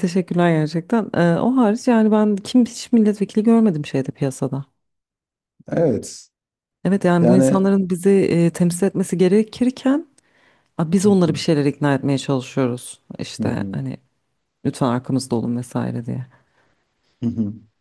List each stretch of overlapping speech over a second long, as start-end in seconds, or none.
none